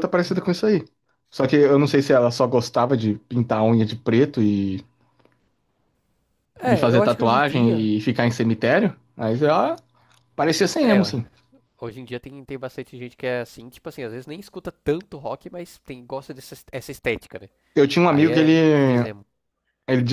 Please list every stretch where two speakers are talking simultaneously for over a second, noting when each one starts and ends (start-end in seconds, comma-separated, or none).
6.7-7.9